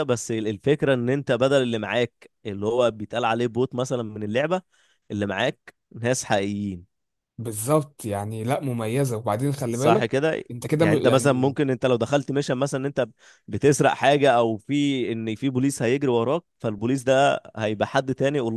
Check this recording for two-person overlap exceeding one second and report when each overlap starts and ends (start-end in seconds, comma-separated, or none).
9.7-11.6